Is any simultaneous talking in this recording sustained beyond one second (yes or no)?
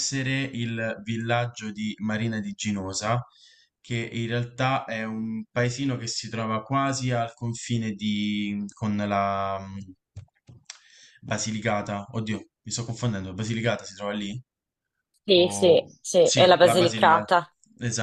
yes